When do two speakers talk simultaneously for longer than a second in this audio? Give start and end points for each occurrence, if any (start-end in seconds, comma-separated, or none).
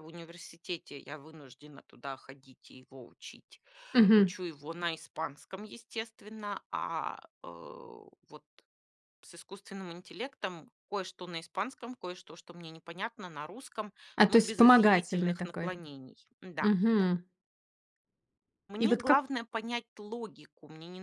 14.3-15.7